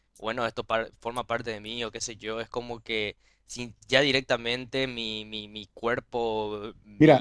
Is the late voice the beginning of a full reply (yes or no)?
yes